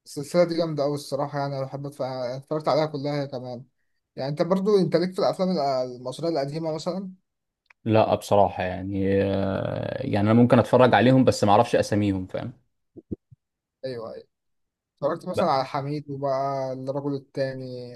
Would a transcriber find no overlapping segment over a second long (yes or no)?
yes